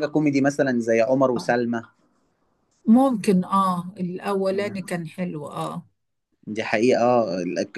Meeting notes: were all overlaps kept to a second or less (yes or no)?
yes